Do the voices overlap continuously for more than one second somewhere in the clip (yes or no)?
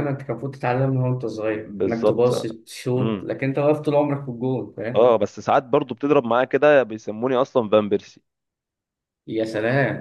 no